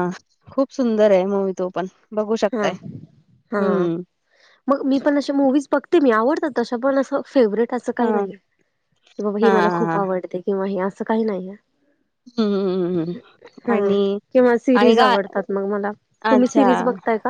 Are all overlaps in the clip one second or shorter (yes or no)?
yes